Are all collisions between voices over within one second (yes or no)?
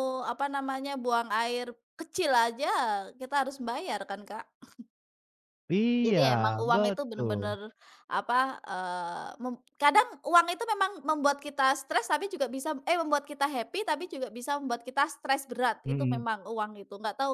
no